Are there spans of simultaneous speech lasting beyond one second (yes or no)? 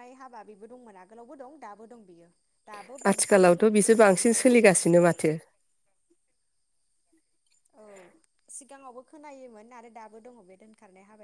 yes